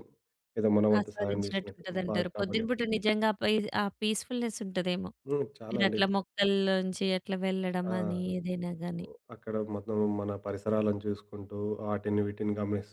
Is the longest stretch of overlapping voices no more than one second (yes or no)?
no